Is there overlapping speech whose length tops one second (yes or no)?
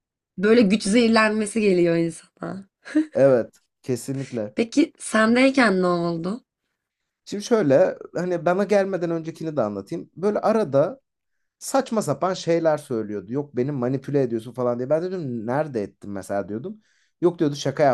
no